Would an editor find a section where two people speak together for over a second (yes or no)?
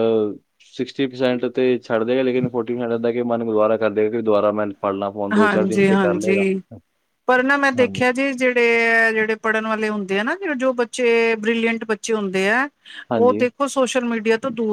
no